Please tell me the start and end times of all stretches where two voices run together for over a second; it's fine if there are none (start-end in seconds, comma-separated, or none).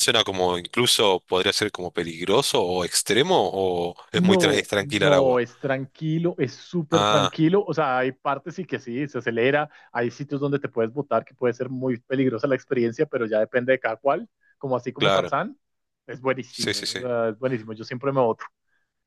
4.1-5.4